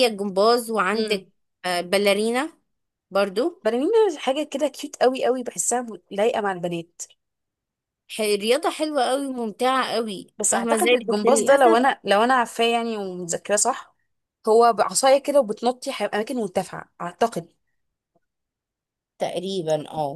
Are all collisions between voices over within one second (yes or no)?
no